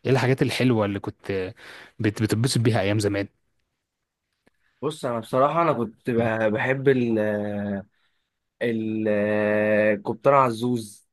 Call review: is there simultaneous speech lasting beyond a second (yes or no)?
no